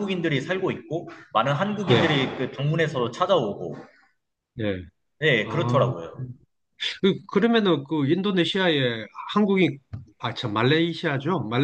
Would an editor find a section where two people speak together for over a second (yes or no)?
no